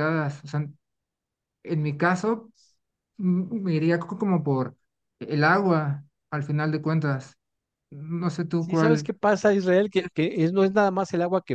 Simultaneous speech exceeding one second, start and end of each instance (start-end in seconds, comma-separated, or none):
none